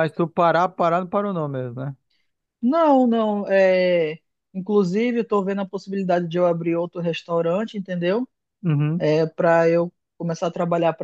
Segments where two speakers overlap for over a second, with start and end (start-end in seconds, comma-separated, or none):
none